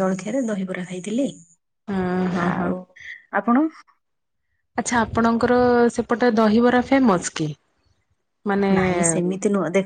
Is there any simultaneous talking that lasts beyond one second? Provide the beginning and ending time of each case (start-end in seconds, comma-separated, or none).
none